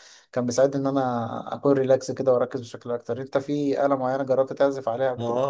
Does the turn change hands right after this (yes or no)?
yes